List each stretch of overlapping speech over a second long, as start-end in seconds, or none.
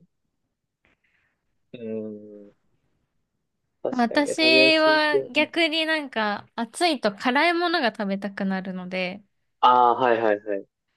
3.9-5.5